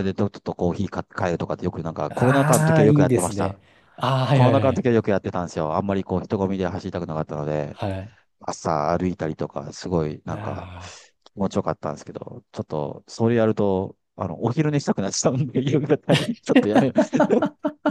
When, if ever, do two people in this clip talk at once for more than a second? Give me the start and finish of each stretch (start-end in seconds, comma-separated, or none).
2.1-3.6